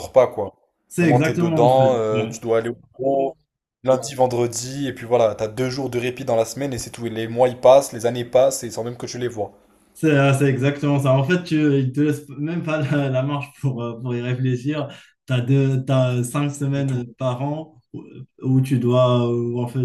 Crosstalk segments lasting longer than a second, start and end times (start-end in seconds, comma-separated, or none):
1.0-2.4